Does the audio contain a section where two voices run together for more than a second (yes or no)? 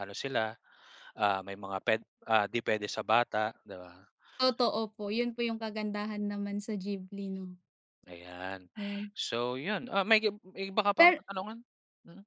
no